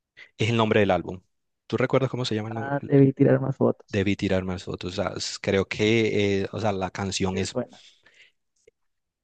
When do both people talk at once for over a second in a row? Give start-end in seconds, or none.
none